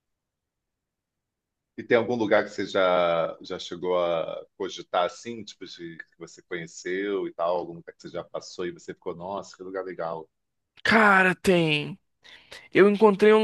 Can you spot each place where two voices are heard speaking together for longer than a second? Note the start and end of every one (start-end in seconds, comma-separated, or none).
none